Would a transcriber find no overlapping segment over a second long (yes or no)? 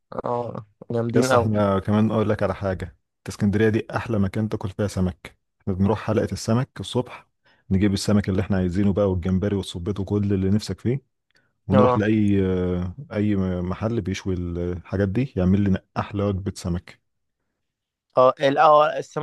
yes